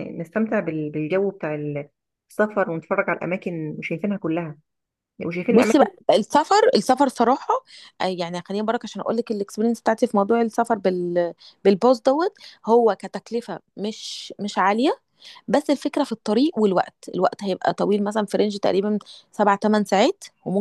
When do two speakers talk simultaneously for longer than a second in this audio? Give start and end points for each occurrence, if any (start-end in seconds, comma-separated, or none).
none